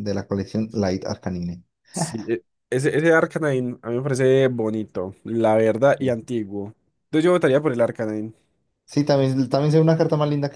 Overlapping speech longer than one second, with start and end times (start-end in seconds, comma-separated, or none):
none